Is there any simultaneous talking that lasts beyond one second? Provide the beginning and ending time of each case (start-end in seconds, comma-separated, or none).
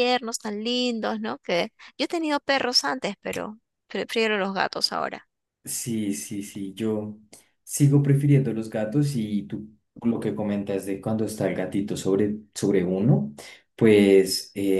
none